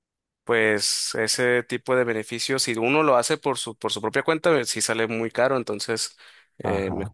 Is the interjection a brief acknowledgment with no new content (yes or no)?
yes